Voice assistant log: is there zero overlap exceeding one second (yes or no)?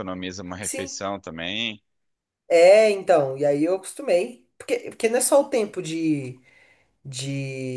yes